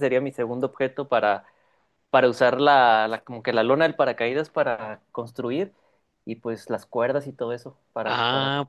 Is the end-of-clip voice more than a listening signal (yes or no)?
yes